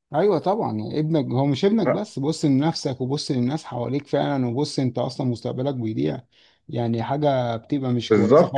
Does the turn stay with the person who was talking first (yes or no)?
no